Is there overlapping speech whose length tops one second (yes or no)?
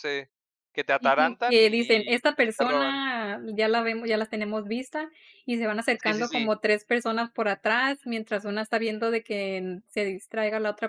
yes